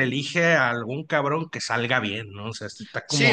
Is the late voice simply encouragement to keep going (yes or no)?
no